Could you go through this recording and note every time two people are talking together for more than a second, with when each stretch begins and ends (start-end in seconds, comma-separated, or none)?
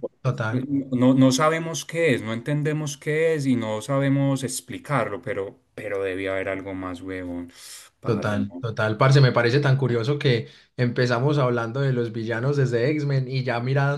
none